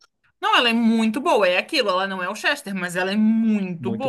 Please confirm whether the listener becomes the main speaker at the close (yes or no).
no